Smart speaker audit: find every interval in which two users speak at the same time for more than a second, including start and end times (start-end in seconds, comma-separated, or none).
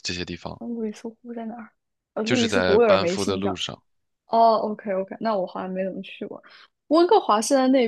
2.2-3.6